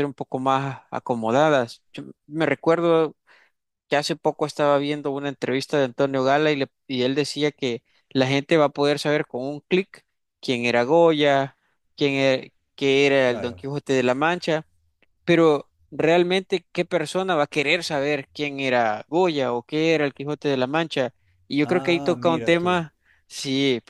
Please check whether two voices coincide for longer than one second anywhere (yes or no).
yes